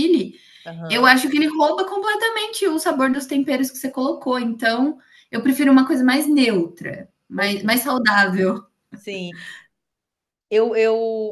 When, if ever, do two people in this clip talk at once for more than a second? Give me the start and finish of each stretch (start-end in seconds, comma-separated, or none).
none